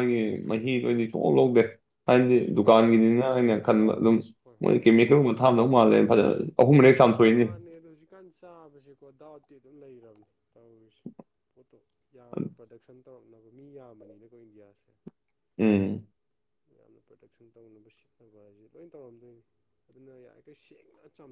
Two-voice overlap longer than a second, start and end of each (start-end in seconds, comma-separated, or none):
none